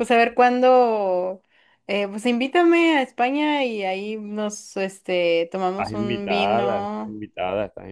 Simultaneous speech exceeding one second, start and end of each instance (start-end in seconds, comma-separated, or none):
5.7-7.2